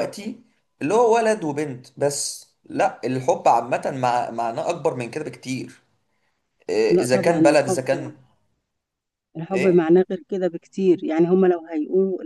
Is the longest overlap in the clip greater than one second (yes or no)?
yes